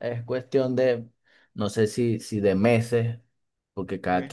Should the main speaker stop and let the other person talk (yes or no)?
no